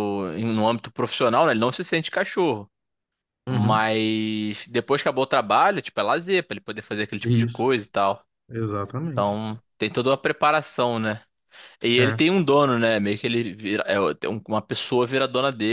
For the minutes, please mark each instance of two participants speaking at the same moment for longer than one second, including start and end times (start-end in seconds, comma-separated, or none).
none